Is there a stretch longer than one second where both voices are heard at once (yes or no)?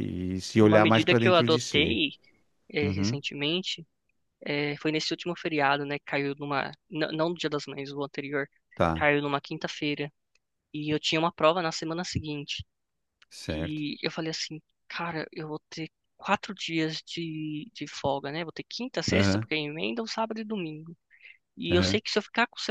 yes